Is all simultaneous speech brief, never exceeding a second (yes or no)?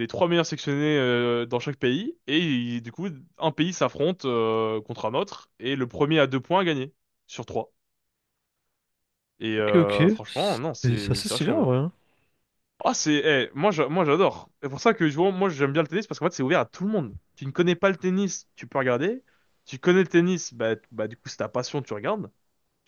no